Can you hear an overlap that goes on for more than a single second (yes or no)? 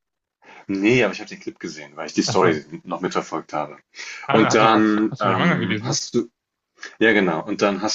yes